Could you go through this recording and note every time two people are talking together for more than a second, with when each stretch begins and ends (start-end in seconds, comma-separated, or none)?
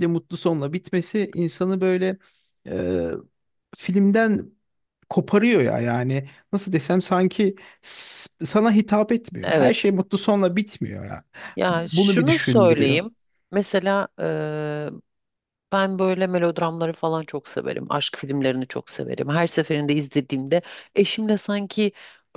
11.7-13.0